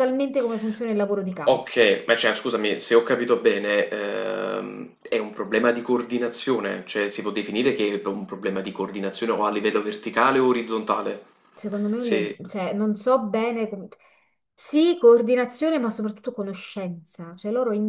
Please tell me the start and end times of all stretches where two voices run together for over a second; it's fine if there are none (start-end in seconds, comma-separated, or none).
none